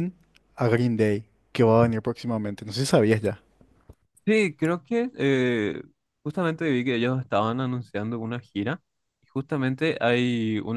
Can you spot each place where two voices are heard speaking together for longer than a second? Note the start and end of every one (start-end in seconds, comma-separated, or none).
none